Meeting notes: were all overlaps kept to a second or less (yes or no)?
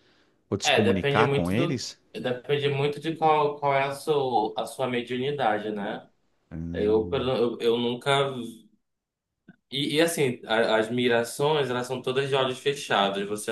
no